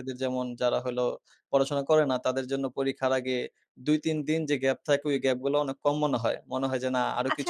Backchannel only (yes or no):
no